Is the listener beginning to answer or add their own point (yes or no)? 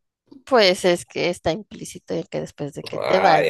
yes